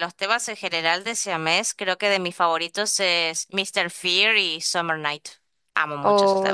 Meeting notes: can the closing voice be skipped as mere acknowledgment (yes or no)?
no